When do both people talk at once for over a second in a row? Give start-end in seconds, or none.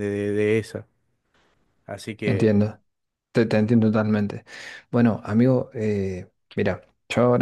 none